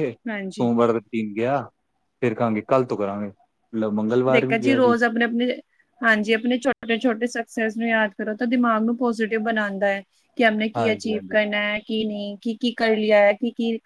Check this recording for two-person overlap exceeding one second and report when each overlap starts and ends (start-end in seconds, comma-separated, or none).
none